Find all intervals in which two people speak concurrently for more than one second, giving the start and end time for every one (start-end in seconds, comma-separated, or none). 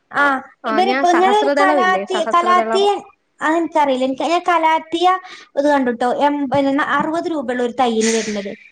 0.7-2.8